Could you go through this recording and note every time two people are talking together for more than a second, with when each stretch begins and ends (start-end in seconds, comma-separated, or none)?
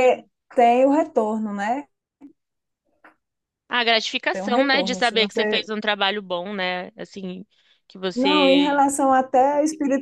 4.3-5.7